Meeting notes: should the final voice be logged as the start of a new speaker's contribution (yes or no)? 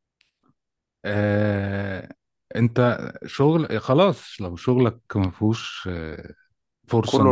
no